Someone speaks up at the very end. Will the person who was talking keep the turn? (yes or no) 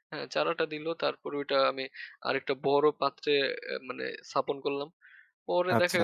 no